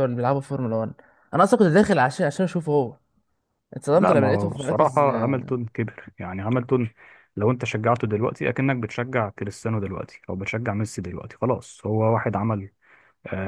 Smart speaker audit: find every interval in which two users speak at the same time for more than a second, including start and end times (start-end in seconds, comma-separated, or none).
3.9-5.4